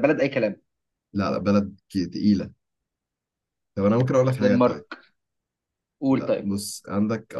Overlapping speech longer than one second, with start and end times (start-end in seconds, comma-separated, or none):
none